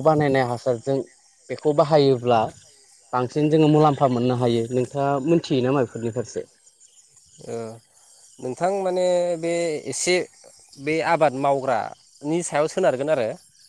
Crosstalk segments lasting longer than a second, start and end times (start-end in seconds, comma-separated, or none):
none